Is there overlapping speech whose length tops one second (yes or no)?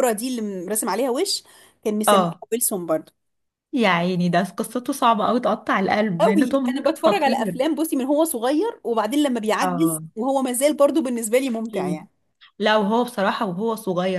yes